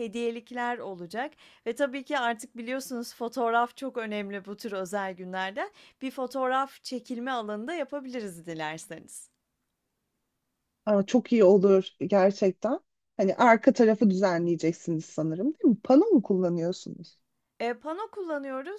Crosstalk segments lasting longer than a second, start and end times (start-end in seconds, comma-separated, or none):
none